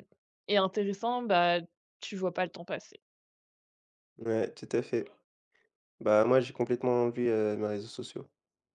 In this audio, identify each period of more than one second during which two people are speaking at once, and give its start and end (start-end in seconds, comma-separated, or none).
none